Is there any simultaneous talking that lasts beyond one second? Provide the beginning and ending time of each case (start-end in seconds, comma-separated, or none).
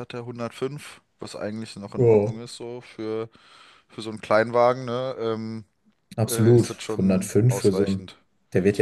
6.3-8.1